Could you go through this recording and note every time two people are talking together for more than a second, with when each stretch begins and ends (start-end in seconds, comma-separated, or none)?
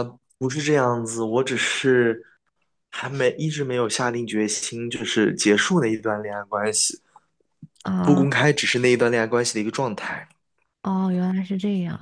none